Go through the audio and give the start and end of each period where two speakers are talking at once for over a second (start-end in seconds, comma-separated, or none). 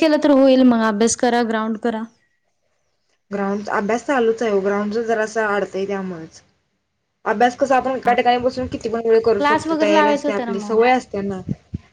9.4-10.8